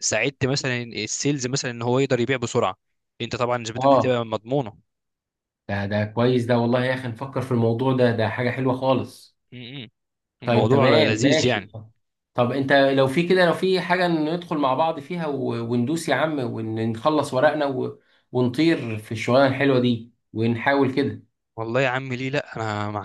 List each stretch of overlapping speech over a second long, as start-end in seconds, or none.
10.4-11.7